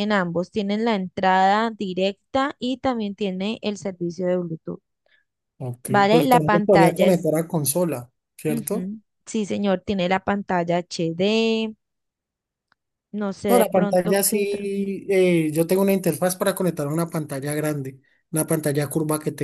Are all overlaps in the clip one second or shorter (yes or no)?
no